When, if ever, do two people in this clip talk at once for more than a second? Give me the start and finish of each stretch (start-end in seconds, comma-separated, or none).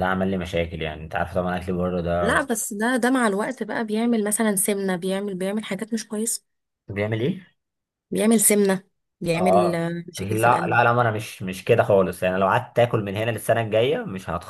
9.3-10.8